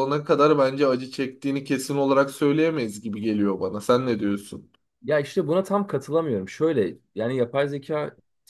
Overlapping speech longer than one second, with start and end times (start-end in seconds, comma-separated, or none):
none